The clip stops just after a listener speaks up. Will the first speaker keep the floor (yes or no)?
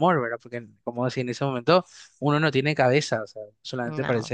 yes